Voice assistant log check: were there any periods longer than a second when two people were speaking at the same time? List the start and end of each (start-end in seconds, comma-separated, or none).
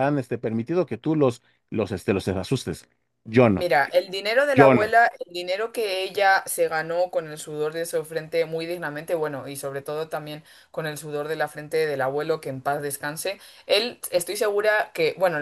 none